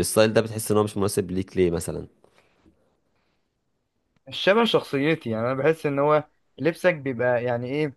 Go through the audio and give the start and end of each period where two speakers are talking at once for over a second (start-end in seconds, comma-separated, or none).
none